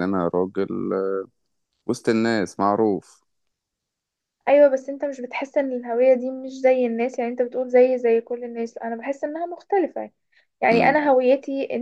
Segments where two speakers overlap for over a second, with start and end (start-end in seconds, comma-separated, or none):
none